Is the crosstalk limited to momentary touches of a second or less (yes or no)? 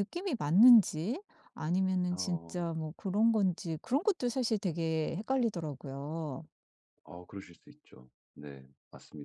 yes